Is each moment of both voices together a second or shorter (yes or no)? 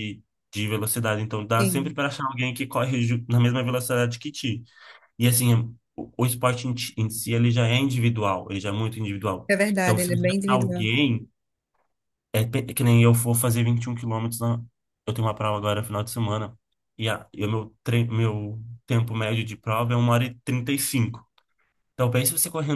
no